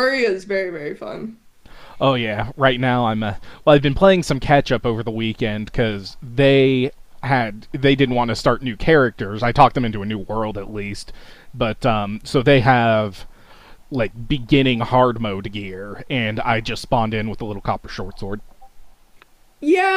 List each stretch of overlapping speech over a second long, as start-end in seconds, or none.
none